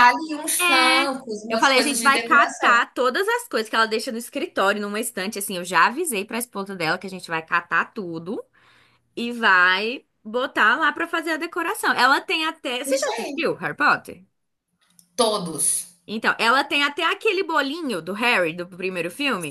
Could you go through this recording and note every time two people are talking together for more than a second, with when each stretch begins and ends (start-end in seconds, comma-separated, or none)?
0.6-2.8